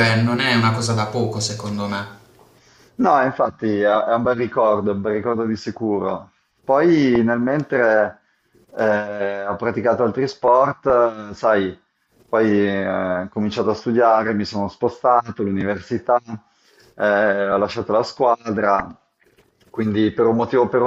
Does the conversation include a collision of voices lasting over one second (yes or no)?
no